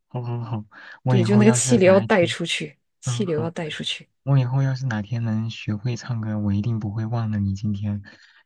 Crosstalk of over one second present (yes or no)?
yes